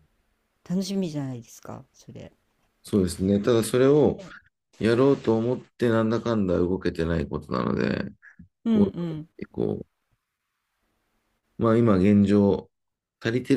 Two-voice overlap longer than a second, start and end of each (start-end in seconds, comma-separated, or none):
none